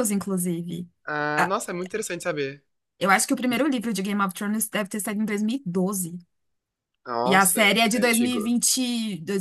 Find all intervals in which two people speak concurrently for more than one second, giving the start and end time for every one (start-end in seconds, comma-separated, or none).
7.2-8.6